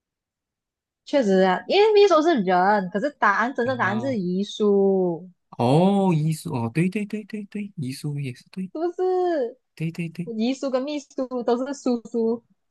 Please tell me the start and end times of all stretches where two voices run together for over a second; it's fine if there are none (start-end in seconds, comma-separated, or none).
none